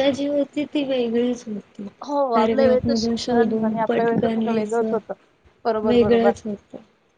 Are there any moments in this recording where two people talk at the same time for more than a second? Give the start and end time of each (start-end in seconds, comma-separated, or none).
2.3-4.9